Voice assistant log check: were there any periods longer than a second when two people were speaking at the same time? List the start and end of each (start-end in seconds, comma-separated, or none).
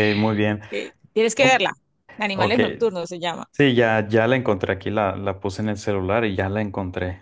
none